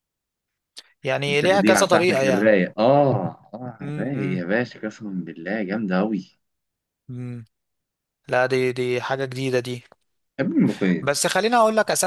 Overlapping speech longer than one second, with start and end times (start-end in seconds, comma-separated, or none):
1.2-2.5